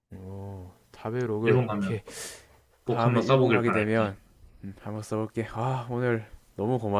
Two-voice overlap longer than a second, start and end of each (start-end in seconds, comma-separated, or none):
2.9-4.2